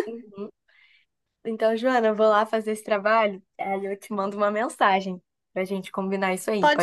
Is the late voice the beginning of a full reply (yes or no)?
yes